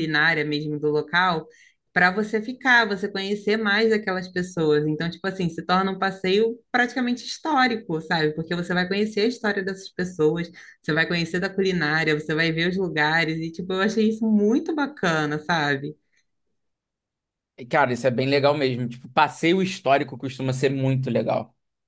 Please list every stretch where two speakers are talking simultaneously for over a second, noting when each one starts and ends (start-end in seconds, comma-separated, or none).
none